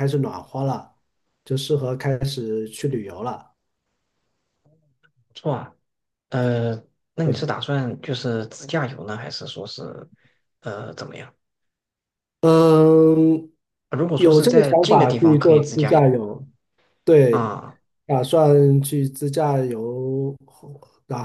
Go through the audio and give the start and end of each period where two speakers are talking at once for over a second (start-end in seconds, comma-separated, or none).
14.2-16.1